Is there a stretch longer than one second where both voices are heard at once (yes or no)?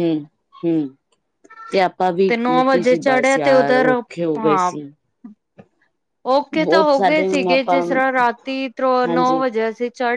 yes